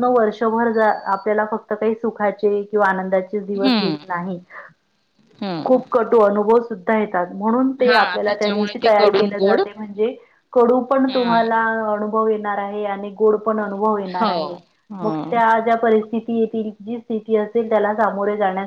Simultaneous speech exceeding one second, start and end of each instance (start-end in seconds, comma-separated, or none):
7.8-9.6